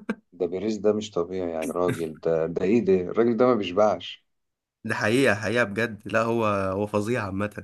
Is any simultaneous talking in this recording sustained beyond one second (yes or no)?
no